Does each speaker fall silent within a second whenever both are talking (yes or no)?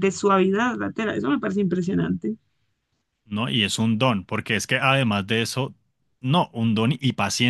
yes